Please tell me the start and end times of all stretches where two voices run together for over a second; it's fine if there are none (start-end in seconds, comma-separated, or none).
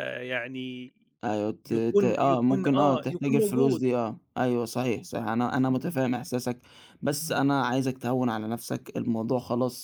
1.6-3.8